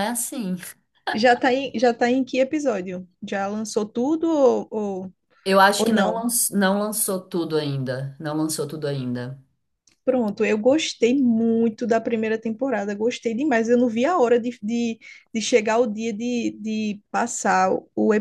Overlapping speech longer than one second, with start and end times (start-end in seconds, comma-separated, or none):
none